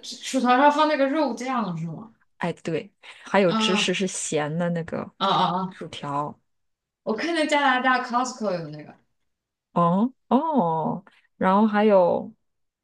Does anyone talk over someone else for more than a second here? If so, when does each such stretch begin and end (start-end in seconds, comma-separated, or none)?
none